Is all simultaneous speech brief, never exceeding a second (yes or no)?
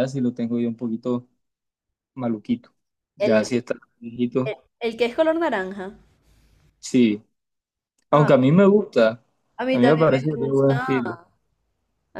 no